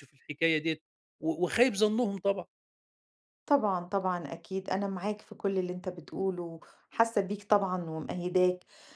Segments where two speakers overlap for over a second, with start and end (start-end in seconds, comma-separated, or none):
none